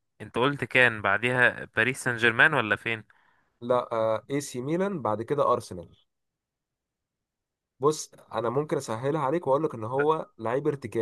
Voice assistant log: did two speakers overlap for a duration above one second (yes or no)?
no